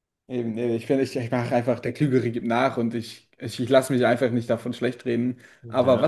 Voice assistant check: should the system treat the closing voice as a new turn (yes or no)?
no